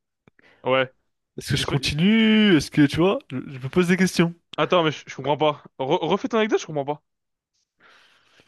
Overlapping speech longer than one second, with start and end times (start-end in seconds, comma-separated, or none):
none